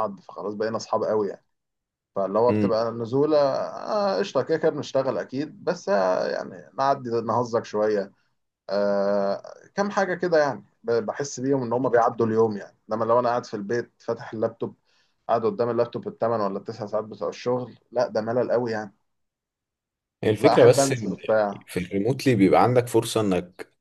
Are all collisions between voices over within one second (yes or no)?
no